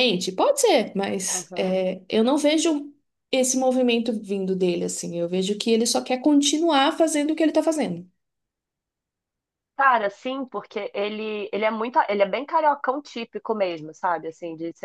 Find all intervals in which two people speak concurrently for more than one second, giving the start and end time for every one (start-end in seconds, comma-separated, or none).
none